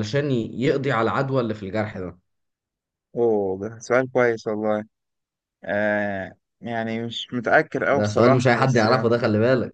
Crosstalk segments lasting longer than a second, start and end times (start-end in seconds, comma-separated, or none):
7.9-9.2